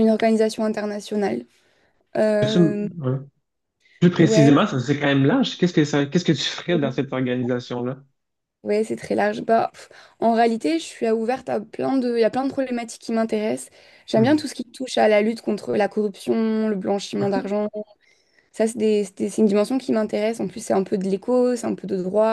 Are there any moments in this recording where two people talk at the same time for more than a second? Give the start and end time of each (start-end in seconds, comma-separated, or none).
none